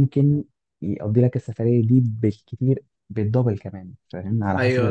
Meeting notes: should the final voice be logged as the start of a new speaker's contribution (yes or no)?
yes